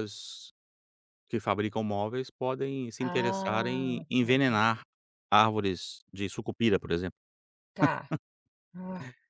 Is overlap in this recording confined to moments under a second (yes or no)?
no